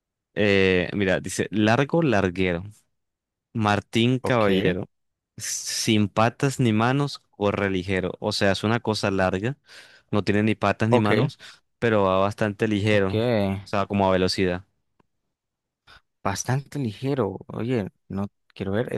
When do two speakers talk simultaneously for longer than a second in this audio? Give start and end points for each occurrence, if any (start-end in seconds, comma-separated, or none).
none